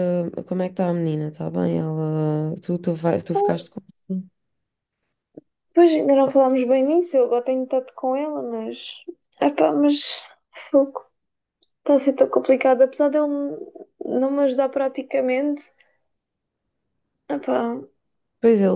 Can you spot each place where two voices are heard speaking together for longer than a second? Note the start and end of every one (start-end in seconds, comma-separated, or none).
none